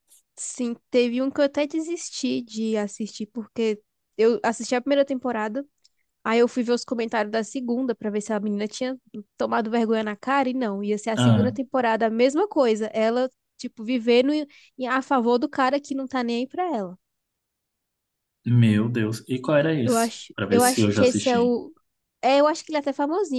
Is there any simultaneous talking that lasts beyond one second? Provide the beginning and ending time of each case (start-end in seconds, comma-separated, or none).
19.8-21.6